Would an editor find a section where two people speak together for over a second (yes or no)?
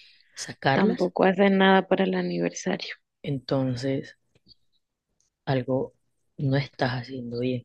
no